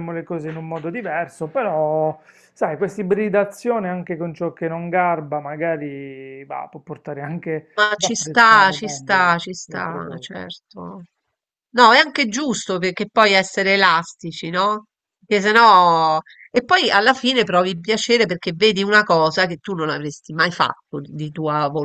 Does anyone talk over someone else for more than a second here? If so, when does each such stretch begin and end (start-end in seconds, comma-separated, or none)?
7.8-10.3